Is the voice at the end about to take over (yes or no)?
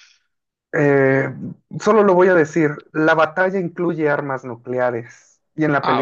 no